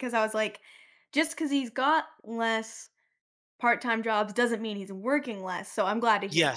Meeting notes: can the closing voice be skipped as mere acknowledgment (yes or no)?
no